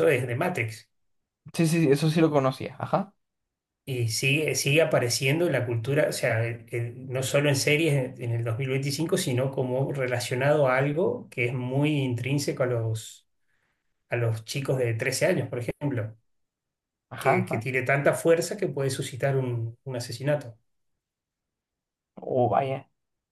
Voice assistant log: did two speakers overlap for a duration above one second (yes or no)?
no